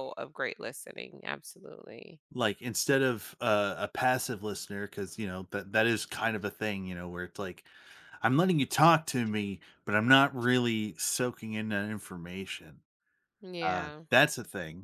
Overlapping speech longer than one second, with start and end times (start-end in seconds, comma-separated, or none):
none